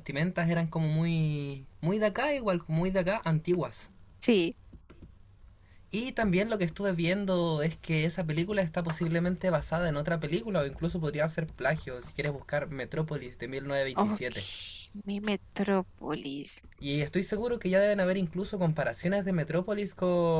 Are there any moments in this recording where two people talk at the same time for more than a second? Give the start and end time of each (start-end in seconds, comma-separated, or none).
none